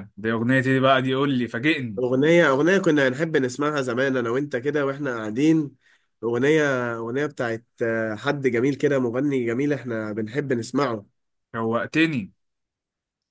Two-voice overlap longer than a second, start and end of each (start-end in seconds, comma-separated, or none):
none